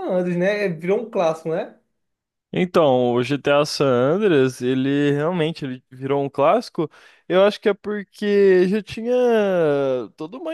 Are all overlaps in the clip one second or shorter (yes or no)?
yes